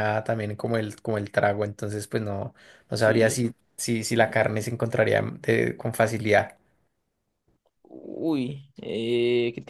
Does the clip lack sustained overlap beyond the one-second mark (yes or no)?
yes